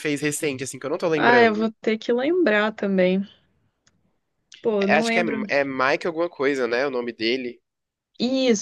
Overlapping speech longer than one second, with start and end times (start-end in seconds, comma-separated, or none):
none